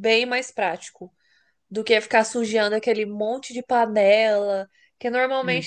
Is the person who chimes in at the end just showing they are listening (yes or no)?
yes